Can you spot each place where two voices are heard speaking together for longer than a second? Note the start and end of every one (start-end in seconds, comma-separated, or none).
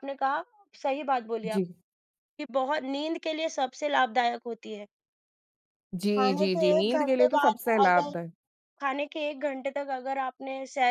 6.2-8.2